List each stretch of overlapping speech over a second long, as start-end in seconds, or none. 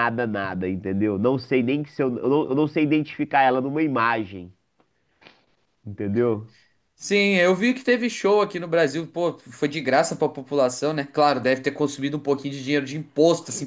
none